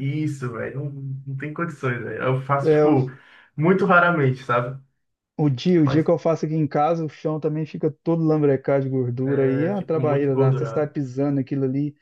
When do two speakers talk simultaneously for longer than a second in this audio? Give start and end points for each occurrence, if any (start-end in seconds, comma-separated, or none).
9.2-10.9